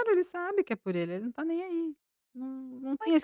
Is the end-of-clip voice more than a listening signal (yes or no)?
no